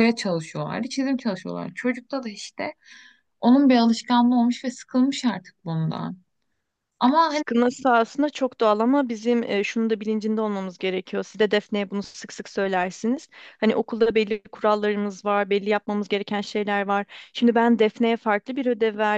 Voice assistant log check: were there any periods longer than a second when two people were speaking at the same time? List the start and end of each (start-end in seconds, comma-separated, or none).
none